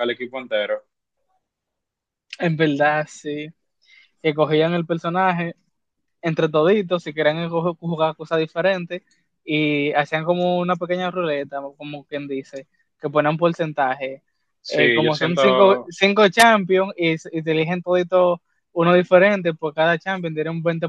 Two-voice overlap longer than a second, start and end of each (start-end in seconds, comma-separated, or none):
14.7-15.9